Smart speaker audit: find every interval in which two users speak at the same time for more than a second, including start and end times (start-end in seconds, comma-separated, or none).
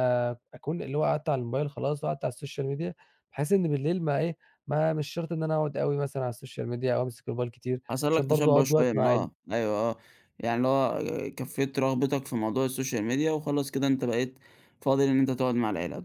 7.9-9.4